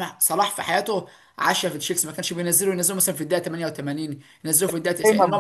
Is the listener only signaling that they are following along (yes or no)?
no